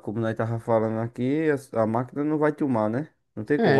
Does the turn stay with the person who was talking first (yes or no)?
no